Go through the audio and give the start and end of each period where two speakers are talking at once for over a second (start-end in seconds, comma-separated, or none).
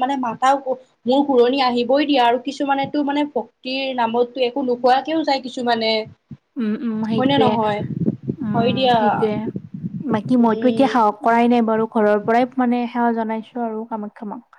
none